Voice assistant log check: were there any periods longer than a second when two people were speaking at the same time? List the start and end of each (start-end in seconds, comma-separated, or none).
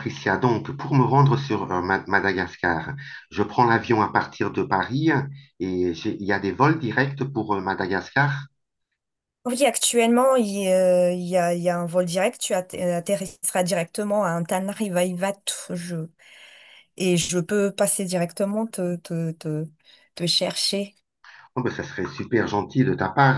none